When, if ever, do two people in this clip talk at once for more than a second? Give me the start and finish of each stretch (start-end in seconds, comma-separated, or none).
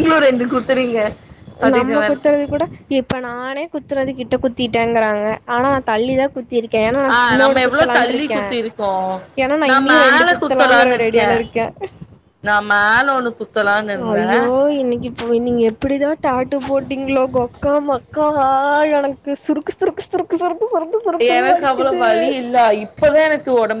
9.7-11.3